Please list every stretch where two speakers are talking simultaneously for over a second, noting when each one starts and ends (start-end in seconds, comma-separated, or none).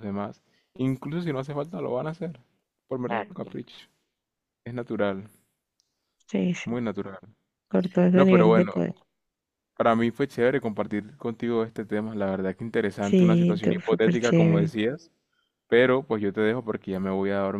13.0-14.7